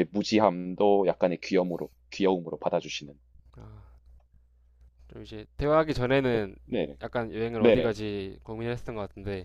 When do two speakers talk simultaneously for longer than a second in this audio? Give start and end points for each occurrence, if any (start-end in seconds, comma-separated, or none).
none